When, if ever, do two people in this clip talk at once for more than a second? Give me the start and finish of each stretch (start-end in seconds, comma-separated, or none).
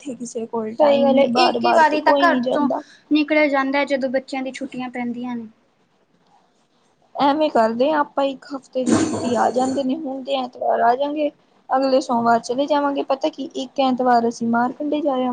0.8-2.7